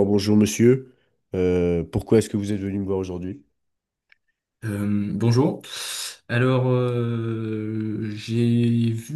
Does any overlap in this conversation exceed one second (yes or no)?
no